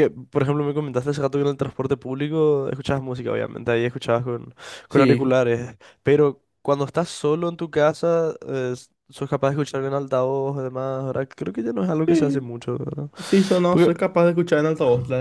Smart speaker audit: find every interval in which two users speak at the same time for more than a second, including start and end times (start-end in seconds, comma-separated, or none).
none